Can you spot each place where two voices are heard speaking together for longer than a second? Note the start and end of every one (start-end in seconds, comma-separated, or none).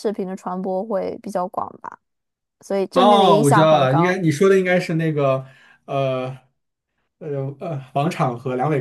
2.9-4.2